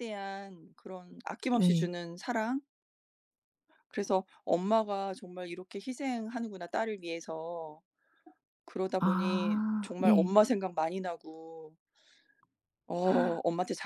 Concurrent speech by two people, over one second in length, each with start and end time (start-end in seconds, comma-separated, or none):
9.0-10.4